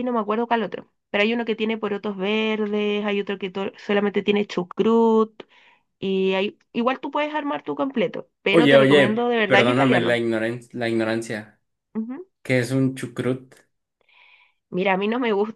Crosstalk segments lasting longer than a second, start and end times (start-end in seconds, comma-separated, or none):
8.5-10.2